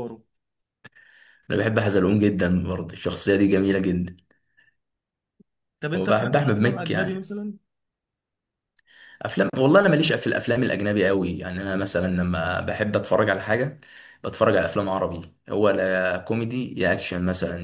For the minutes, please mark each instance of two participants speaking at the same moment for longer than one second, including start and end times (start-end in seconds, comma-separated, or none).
5.9-7.3